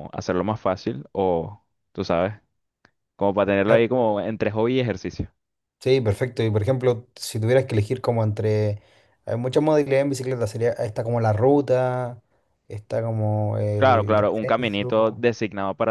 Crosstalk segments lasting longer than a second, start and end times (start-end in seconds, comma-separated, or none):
13.8-15.2